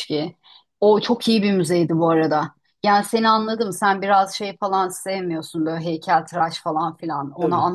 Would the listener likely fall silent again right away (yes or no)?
yes